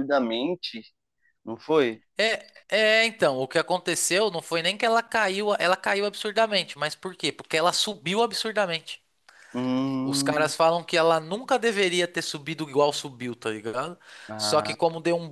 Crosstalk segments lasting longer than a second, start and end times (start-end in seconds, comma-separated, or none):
none